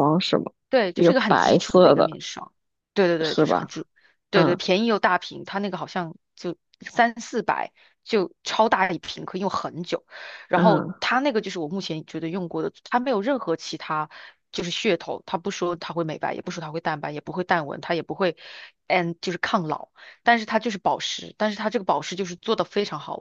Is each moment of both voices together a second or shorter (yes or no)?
no